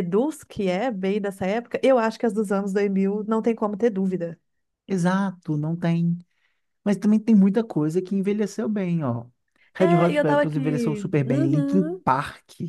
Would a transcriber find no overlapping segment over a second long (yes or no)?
no